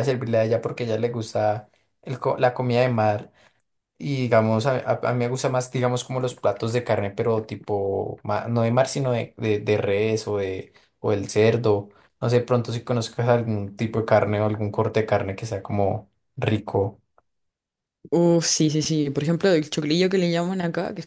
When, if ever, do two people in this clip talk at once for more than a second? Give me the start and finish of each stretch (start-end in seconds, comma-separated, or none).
none